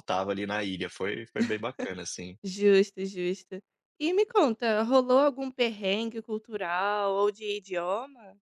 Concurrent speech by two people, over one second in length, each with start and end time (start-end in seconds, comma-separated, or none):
none